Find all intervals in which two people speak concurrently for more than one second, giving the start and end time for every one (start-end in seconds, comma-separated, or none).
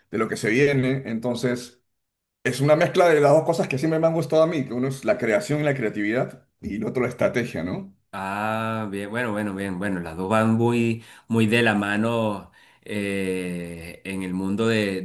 none